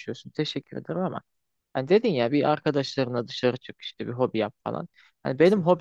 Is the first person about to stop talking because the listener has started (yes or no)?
no